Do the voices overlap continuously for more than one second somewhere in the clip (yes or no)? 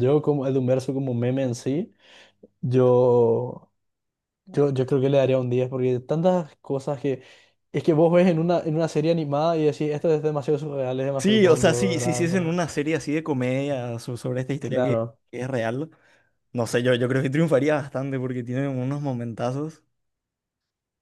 yes